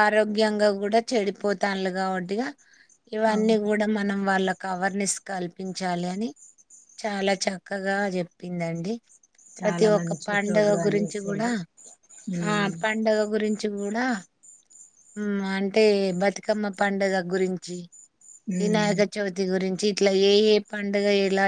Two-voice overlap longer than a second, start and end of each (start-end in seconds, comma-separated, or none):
9.6-11.5